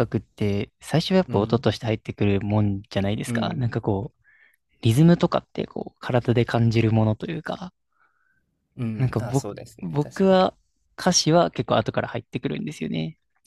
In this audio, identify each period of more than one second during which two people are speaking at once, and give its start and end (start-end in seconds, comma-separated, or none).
9.0-10.4